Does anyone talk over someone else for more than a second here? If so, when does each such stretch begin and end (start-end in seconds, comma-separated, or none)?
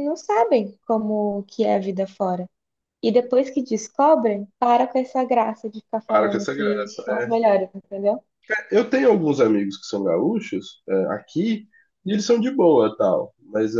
6.1-7.5